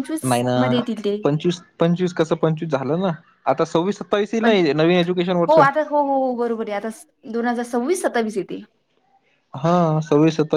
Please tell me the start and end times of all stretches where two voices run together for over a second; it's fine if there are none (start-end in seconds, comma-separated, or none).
none